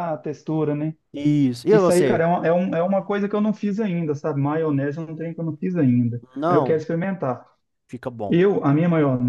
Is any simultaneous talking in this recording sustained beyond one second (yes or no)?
no